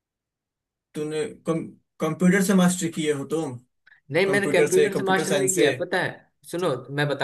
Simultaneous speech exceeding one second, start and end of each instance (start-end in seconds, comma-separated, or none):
4.3-5.7